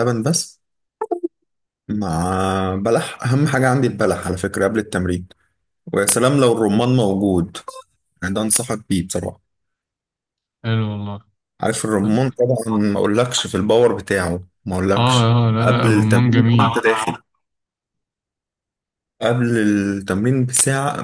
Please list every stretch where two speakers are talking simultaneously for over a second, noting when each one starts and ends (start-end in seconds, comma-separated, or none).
15.0-16.8